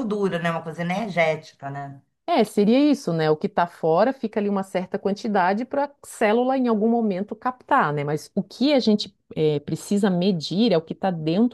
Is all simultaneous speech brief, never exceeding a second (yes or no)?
yes